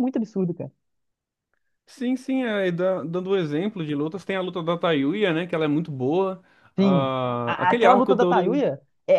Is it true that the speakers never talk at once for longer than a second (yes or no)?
no